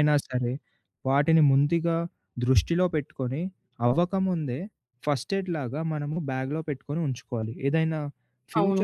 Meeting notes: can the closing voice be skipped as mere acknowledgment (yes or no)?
yes